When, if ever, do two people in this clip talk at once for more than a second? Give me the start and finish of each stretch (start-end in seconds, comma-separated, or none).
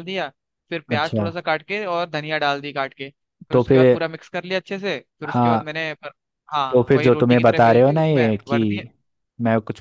6.7-8.6